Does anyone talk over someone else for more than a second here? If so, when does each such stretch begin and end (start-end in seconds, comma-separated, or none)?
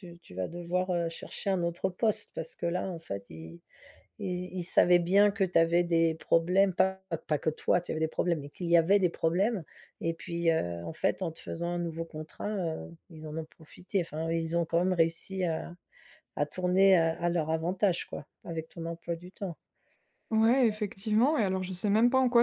none